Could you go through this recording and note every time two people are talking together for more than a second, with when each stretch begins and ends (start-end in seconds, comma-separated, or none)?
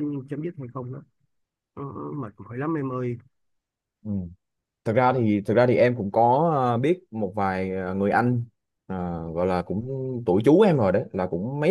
none